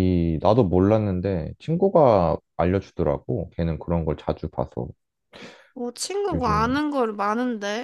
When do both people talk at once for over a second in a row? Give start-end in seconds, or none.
none